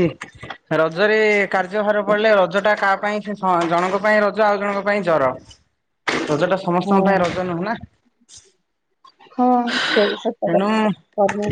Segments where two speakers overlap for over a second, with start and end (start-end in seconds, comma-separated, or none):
none